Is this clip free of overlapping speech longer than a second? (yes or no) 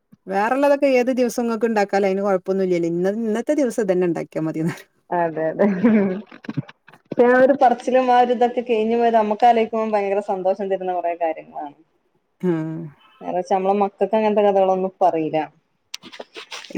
yes